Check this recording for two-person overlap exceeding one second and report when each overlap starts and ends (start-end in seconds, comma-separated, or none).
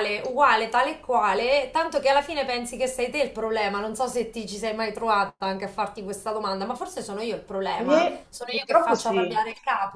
7.7-9.4